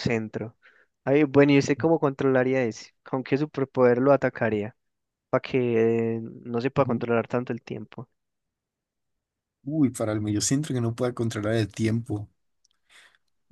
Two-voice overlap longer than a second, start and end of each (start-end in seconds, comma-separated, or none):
none